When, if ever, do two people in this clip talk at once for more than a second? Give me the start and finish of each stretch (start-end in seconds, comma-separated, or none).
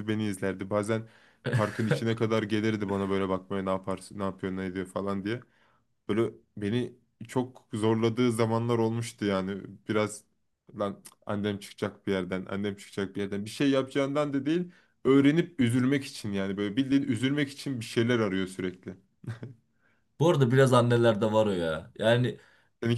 none